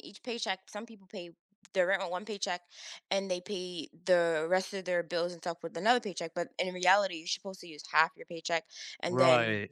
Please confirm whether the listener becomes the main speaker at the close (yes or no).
no